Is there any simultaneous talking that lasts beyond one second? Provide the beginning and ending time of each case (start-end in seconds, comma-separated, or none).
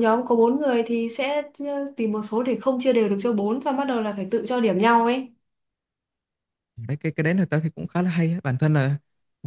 none